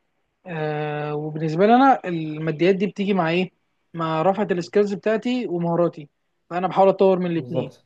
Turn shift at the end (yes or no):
no